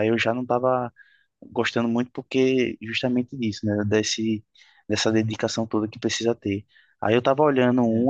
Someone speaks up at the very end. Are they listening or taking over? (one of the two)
listening